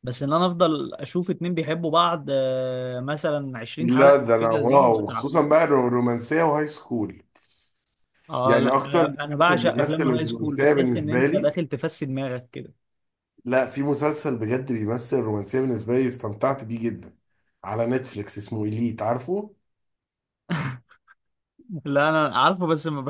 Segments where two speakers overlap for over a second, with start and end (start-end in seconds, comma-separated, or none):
3.8-5.3, 8.4-11.6